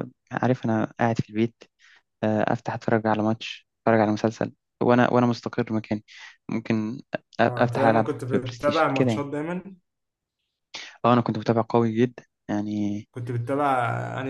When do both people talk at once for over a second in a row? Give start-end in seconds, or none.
7.4-9.3